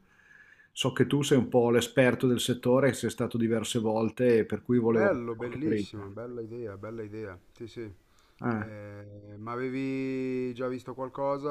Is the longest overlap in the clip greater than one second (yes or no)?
yes